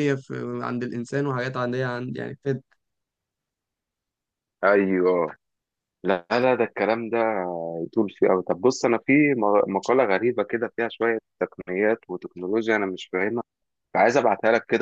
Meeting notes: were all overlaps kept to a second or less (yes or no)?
yes